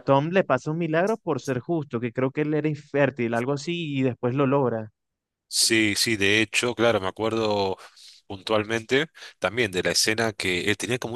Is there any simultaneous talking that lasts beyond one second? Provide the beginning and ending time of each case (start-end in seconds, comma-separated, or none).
none